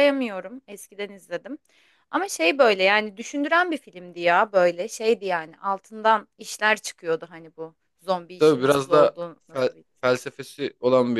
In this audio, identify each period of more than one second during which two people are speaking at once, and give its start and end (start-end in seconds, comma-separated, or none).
8.4-10.2